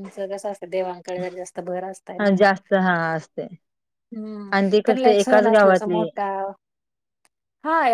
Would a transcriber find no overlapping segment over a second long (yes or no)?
no